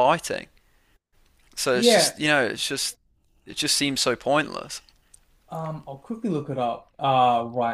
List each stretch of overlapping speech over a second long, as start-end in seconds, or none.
none